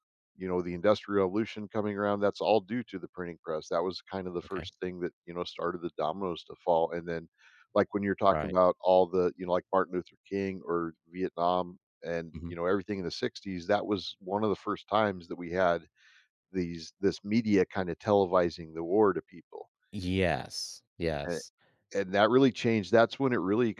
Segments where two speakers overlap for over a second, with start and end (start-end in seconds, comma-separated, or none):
none